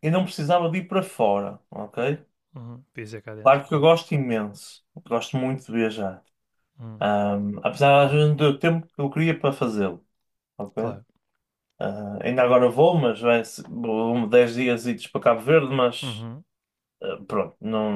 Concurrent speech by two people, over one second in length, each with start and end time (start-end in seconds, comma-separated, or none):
none